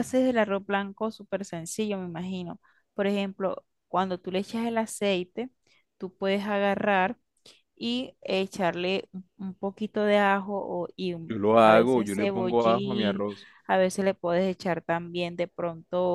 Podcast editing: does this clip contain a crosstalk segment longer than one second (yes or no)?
yes